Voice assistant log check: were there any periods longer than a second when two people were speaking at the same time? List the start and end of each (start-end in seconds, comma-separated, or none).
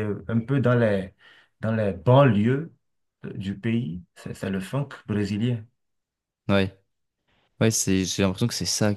none